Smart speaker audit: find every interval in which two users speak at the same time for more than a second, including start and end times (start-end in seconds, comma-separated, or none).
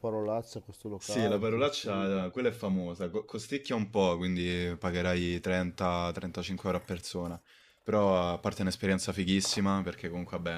1.0-2.2